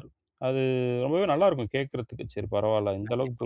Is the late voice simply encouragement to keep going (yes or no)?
yes